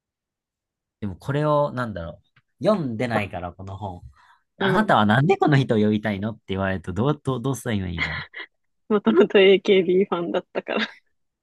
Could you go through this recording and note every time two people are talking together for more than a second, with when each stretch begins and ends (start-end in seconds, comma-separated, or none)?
none